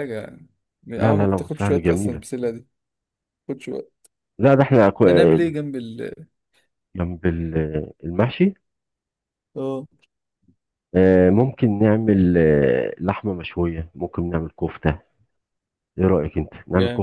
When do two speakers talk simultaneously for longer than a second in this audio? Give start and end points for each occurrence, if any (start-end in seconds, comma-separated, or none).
1.0-2.2